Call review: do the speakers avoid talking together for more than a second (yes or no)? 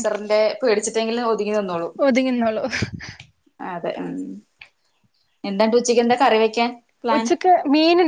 yes